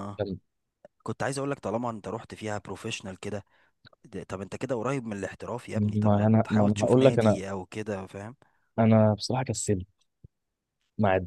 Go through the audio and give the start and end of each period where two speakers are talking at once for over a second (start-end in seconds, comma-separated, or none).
5.8-7.4